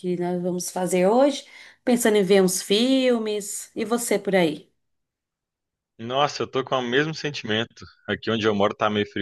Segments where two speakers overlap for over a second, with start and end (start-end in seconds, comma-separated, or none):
none